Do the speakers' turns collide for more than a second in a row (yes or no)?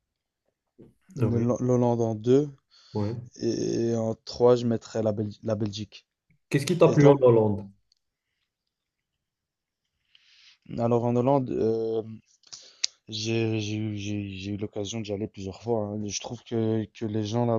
no